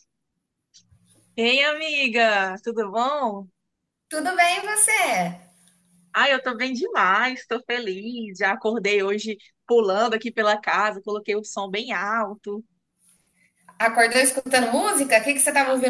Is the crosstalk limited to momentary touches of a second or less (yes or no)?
yes